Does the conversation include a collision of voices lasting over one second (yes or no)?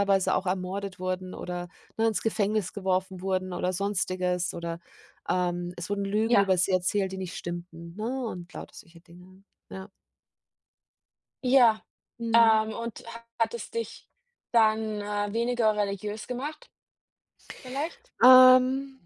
no